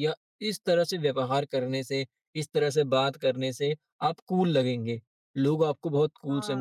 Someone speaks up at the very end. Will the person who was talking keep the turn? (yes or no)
yes